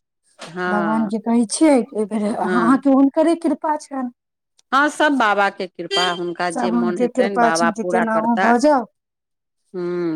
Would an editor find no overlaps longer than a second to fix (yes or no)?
no